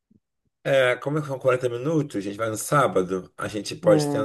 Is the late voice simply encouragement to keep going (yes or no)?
yes